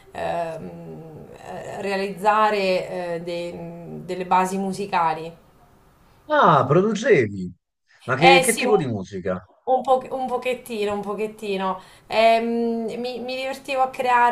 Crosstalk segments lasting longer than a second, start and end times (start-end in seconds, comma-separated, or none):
8.2-9.5